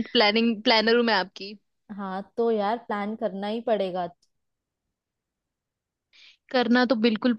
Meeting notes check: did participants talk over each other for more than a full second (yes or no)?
no